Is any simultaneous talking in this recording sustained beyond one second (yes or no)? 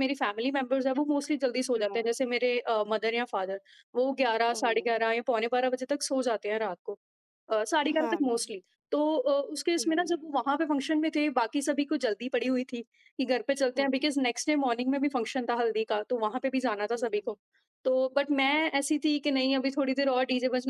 no